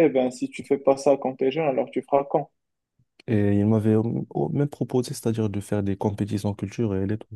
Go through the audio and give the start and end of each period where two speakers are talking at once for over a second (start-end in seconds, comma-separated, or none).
none